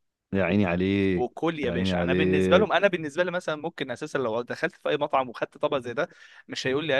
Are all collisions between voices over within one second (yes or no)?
no